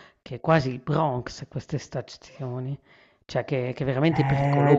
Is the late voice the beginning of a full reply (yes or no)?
yes